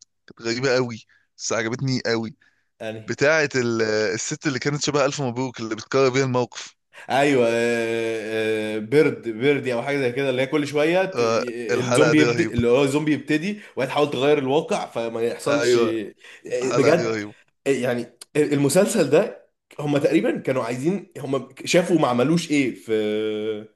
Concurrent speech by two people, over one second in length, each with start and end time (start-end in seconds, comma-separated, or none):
11.1-12.6